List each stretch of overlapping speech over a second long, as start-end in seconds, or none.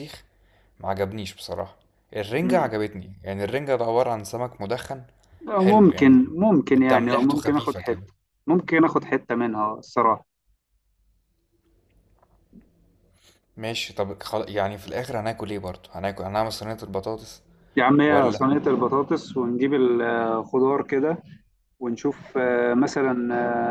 6.9-8.1